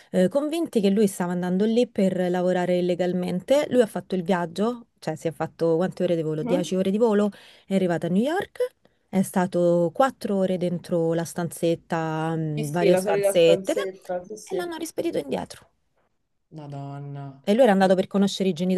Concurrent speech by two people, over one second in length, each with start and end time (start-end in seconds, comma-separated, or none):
12.6-14.7